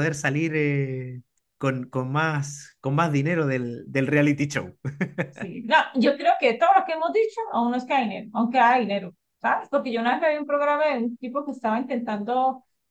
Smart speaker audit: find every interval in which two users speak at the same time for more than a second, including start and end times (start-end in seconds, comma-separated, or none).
none